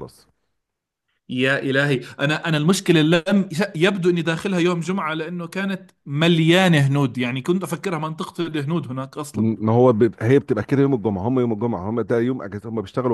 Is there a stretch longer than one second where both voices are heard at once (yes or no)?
no